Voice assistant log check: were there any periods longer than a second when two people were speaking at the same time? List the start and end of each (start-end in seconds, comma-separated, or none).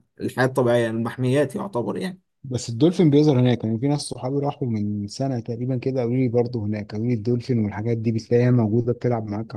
none